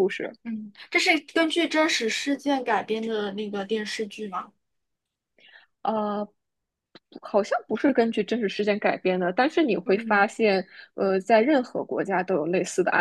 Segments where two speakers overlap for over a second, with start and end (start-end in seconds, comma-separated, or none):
none